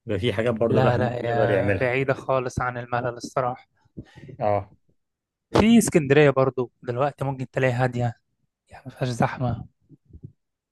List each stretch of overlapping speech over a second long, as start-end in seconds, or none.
0.7-2.0